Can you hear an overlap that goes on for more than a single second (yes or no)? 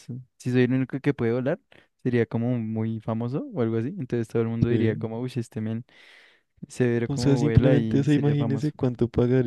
yes